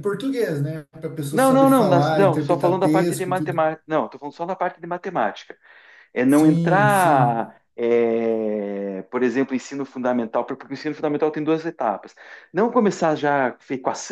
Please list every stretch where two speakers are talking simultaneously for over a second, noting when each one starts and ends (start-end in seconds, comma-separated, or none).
1.3-3.6, 6.3-7.5